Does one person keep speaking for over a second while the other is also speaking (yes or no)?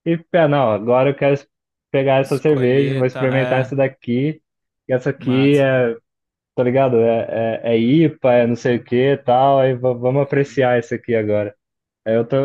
yes